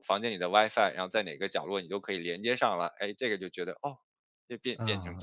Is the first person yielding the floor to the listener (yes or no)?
yes